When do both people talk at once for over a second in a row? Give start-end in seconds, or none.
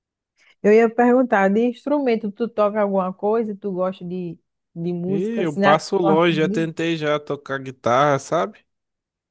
5.1-6.7